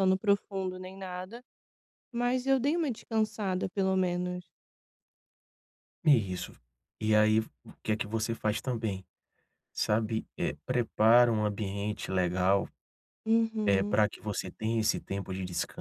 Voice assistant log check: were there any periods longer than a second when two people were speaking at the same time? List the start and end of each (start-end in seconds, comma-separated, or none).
none